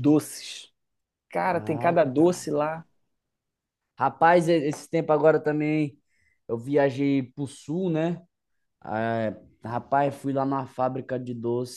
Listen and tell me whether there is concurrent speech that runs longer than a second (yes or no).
yes